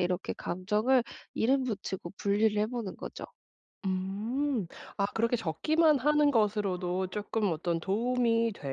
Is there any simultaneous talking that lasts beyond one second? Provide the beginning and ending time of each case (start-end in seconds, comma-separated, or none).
none